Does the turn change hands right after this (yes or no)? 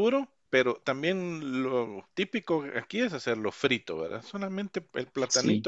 no